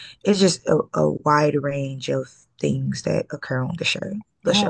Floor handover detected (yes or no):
yes